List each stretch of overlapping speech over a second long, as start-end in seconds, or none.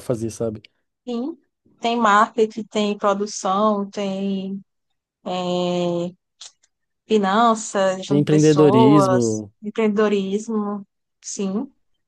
8.1-9.5